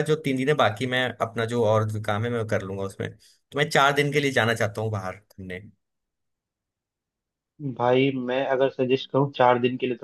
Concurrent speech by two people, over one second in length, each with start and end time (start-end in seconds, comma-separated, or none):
none